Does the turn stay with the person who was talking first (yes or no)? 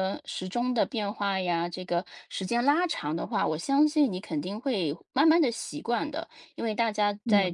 yes